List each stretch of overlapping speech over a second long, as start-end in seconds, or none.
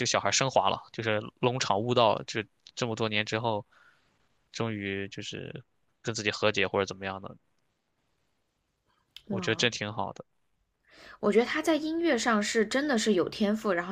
none